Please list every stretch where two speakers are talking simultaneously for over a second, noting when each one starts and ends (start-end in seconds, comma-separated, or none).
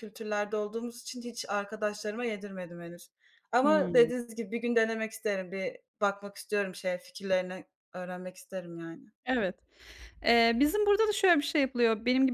none